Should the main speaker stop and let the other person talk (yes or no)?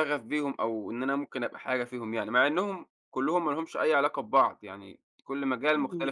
yes